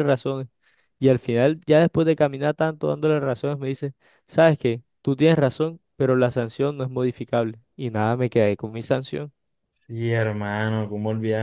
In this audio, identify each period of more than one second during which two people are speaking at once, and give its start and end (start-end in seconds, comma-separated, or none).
none